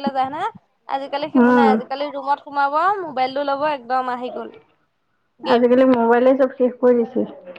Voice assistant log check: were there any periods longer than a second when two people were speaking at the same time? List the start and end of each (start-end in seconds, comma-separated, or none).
none